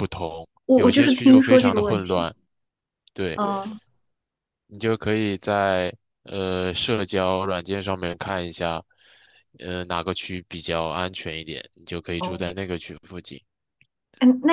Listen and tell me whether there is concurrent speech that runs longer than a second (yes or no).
yes